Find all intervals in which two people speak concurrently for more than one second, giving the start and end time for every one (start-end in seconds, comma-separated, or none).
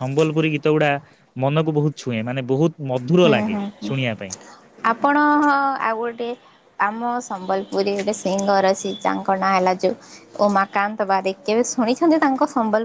none